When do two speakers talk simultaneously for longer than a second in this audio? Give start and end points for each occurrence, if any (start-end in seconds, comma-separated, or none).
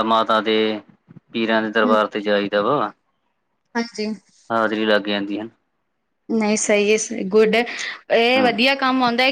none